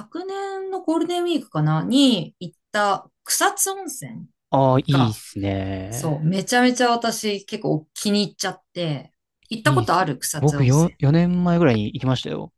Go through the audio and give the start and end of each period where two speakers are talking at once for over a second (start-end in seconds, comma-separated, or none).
9.6-11.0